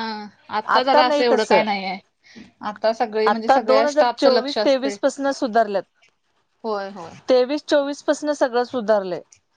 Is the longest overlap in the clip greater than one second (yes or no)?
yes